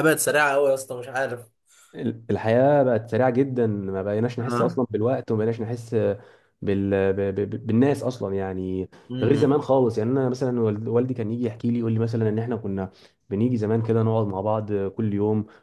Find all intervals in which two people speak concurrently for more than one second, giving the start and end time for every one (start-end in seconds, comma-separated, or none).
none